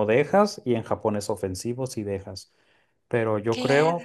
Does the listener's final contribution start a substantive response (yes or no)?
no